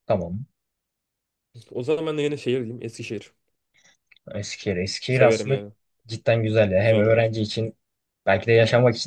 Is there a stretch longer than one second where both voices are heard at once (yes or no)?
no